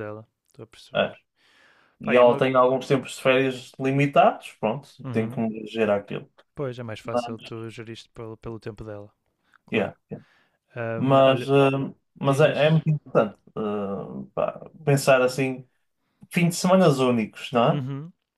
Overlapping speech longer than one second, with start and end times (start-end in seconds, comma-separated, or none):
none